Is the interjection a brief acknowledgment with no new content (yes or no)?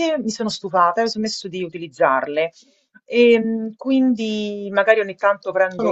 yes